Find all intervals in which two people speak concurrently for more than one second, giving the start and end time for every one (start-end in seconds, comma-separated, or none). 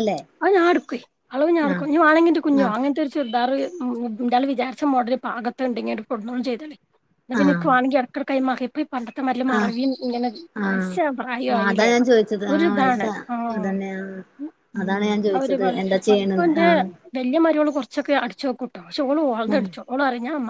none